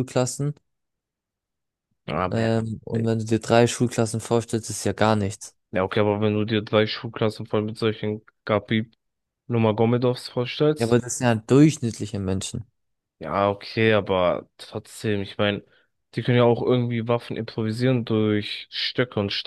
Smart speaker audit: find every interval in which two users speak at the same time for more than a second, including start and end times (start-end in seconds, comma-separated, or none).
none